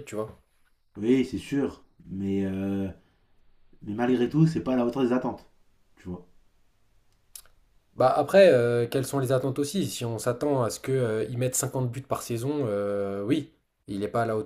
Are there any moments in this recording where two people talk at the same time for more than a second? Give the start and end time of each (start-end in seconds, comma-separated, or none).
none